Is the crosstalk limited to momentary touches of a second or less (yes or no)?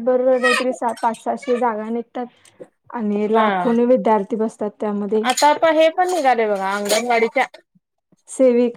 yes